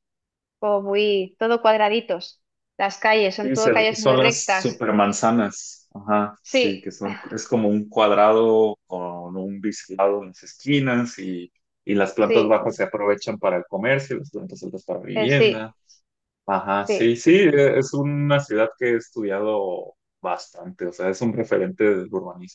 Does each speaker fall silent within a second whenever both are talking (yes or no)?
no